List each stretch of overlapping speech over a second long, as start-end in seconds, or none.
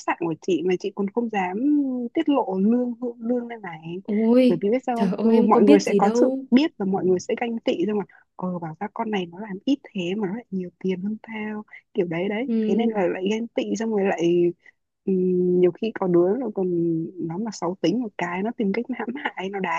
4.5-6.4